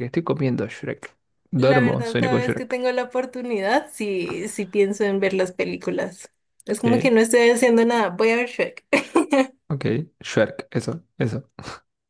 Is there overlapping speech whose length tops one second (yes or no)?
yes